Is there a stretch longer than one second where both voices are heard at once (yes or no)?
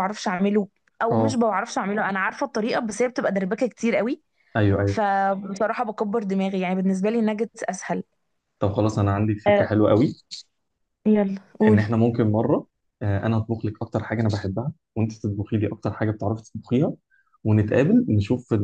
no